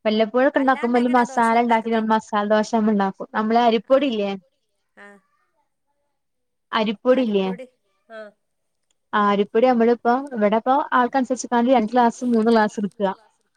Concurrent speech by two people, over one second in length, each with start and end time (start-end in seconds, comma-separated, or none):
0.6-2.0